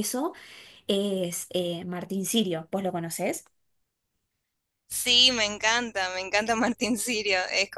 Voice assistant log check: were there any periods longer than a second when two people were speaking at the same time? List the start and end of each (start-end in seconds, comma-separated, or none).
none